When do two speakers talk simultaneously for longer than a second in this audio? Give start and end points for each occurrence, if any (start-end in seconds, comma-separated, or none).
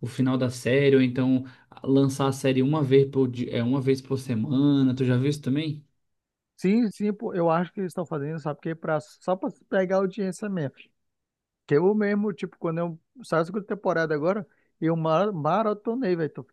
none